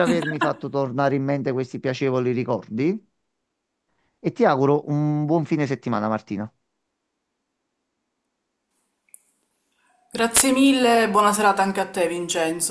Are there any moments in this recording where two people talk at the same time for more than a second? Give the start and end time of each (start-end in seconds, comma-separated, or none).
none